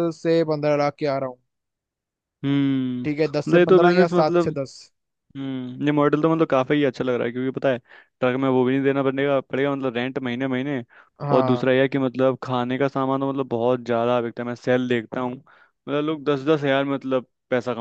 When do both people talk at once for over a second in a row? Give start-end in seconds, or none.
3.0-4.5